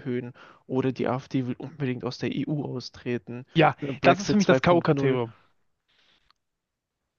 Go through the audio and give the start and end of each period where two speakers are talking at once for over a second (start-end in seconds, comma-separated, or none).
3.5-5.2